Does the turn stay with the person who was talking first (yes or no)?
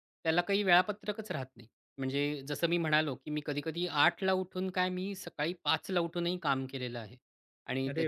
yes